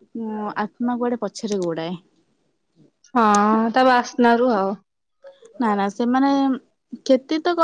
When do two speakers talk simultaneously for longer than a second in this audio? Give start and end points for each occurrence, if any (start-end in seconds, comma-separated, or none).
none